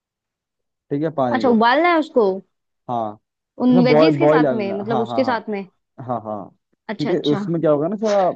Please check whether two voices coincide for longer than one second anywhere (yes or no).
yes